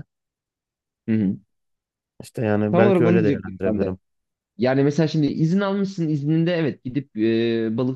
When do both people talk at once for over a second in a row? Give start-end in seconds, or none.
2.7-4.0